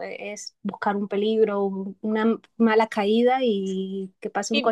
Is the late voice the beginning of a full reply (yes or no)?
yes